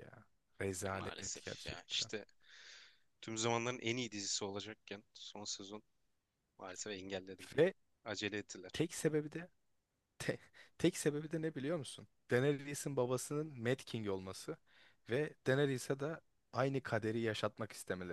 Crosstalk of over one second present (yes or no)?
yes